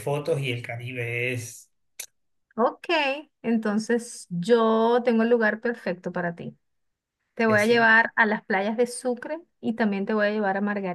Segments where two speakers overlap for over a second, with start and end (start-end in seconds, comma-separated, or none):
none